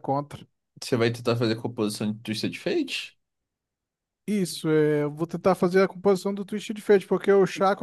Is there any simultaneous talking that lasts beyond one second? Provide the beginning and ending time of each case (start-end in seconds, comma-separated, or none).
none